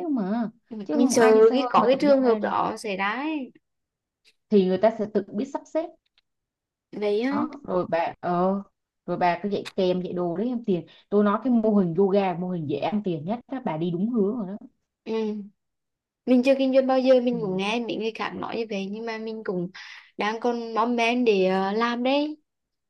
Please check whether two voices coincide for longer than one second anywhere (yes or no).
yes